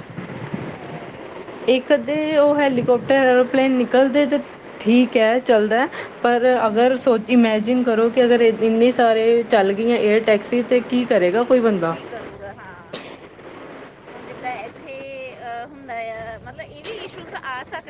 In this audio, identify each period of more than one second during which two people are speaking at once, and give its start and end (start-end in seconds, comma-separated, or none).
none